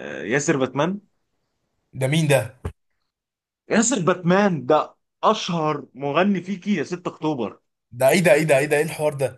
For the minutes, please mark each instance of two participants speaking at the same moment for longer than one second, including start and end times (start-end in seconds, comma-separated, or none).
none